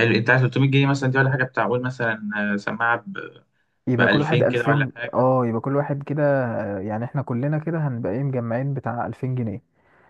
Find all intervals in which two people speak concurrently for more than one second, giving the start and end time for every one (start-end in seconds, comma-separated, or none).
4.0-5.3